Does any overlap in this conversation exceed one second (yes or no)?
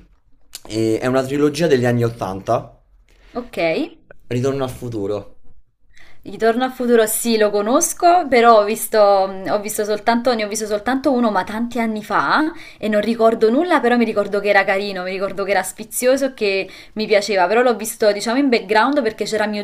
no